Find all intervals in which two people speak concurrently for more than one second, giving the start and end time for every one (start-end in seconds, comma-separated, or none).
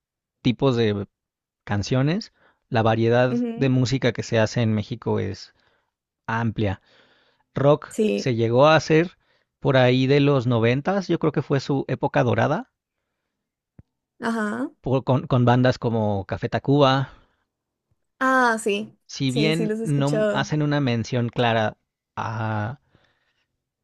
19.1-20.5